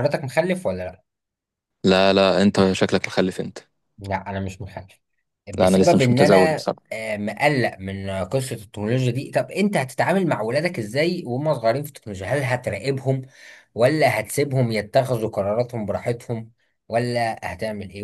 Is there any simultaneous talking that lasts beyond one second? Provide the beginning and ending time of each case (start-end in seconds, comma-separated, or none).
5.6-6.8